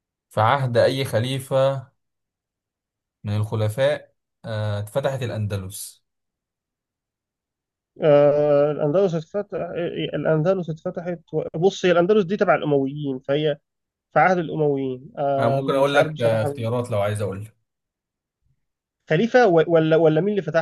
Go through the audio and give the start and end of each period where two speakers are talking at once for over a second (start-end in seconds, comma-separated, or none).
15.4-16.7